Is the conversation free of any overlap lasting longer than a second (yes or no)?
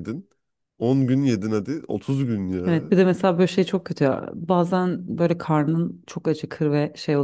yes